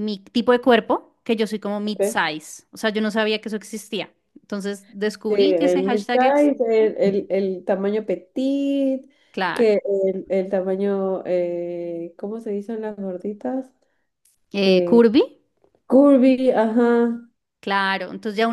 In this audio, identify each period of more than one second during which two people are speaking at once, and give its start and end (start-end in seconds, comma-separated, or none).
5.3-6.9